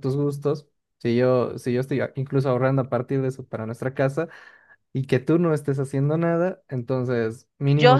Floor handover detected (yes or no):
yes